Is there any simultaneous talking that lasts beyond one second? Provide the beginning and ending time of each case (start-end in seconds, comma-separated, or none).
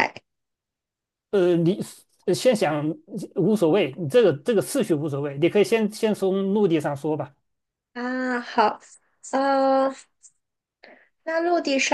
none